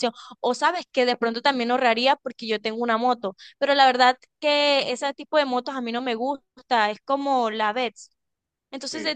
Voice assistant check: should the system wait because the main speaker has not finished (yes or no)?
yes